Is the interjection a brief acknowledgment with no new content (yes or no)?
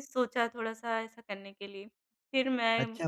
no